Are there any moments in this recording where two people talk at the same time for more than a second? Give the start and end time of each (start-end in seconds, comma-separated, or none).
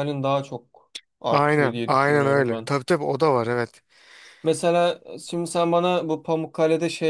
1.3-2.7